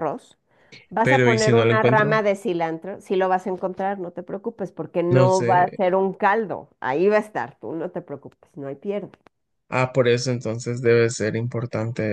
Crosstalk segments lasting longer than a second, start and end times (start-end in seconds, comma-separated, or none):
1.0-2.2